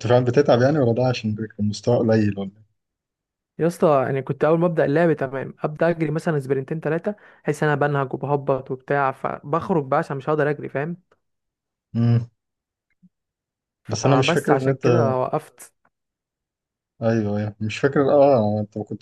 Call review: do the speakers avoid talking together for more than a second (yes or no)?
no